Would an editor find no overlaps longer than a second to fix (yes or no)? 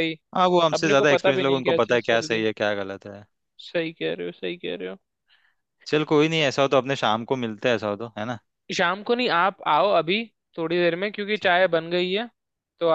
no